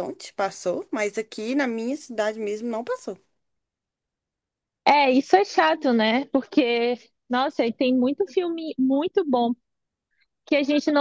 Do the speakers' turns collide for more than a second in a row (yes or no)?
no